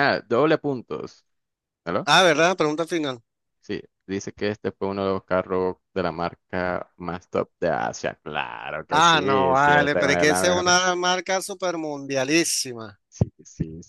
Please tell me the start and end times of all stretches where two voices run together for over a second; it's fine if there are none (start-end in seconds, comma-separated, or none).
8.9-10.8